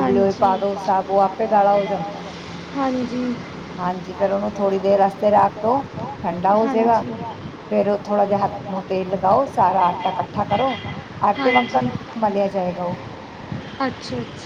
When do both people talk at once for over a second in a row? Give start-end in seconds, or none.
none